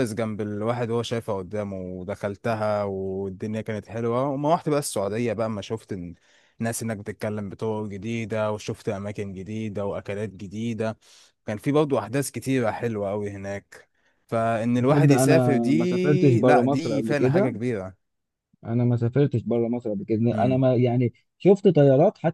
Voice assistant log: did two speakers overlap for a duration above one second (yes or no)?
yes